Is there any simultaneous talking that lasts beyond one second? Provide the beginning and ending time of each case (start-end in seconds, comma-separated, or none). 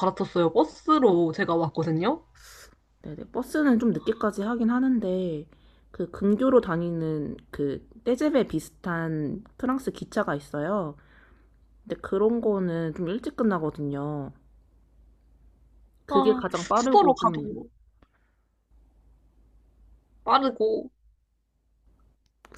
16.1-17.6